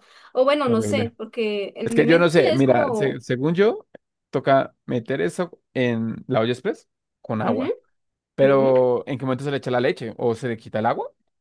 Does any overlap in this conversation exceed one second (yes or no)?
yes